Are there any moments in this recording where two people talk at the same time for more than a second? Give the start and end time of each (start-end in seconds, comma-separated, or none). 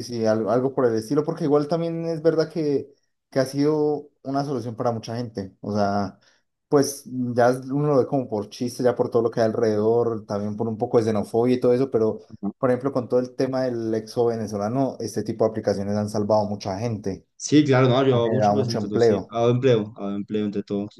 18.1-19.4